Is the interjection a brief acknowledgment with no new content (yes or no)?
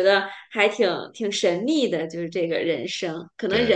yes